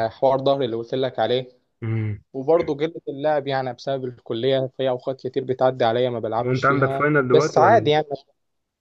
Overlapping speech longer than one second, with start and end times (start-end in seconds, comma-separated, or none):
6.4-7.9